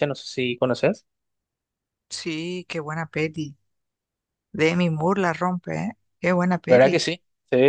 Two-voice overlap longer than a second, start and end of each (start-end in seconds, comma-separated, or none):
none